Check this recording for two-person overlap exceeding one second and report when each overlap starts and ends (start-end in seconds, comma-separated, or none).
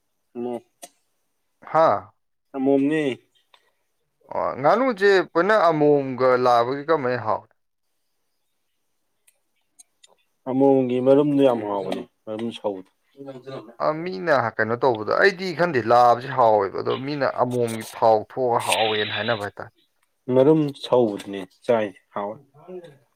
none